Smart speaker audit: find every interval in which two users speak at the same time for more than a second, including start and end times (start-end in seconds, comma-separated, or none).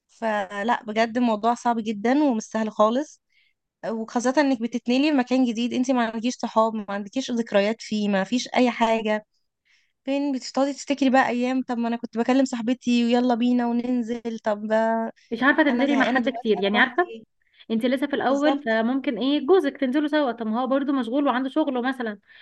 15.7-17.1